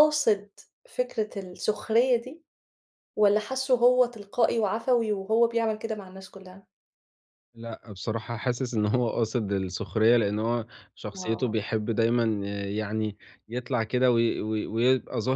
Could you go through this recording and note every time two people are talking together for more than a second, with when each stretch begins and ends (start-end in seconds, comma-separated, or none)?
none